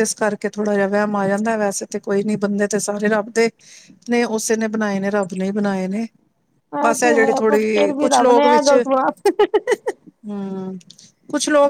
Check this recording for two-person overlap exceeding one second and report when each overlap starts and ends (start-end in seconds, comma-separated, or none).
7.0-8.7